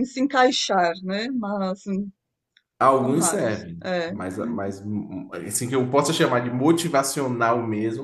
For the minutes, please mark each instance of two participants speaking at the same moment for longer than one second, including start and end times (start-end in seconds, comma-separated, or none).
2.9-4.7